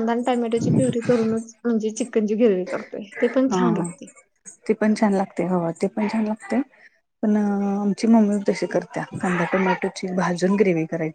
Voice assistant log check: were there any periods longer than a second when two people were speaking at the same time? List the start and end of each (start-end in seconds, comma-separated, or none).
none